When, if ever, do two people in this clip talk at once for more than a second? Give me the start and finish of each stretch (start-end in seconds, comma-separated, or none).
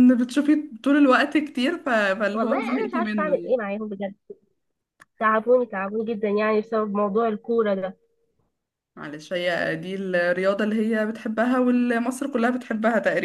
2.3-3.6